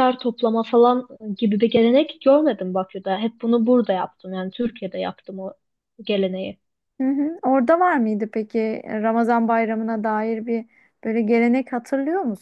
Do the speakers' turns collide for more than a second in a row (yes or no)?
no